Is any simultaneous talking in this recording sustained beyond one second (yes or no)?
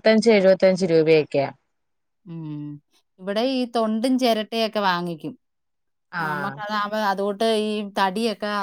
no